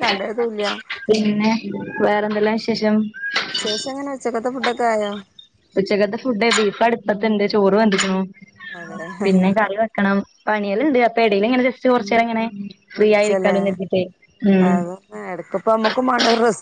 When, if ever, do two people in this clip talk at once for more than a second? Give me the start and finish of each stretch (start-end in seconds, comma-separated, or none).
none